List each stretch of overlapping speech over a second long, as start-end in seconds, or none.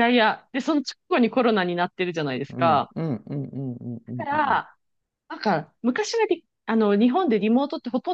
none